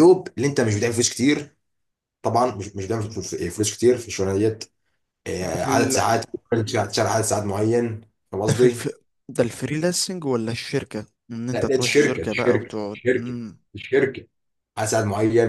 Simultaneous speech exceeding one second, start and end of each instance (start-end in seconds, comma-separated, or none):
11.5-13.4